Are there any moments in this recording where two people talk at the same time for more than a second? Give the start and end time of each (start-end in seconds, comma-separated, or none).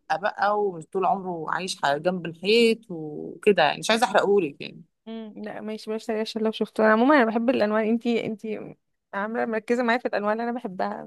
none